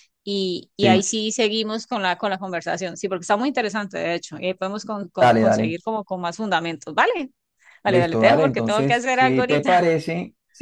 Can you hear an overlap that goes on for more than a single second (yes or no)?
yes